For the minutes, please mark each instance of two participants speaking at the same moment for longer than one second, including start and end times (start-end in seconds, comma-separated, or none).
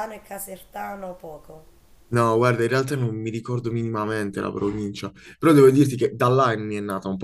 none